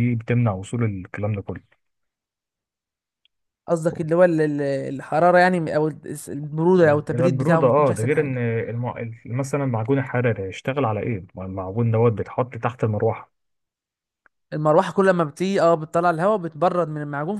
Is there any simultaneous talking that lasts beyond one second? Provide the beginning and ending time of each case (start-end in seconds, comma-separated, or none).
6.8-8.4